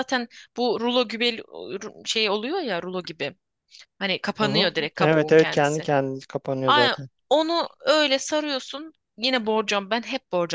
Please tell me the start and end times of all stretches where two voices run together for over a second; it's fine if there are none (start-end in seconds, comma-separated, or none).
4.4-5.9